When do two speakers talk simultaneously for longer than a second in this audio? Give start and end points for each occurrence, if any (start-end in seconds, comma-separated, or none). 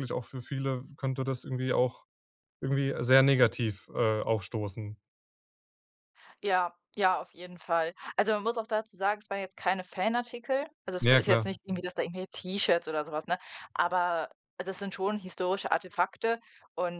none